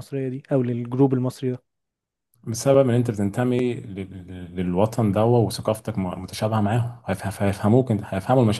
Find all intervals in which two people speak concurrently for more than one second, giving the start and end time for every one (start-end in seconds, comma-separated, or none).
none